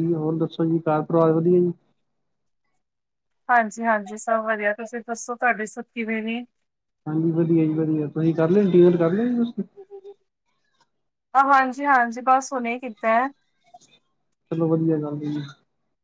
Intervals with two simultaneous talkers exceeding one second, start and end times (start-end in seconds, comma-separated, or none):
none